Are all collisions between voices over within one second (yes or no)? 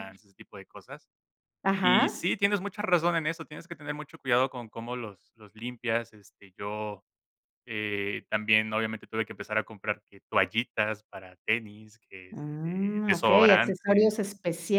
no